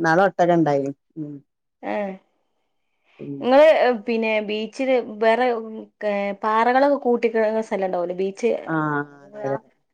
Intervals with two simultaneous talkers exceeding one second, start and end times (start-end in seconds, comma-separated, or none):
none